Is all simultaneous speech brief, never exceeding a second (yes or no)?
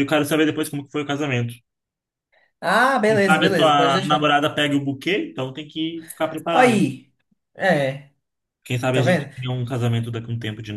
no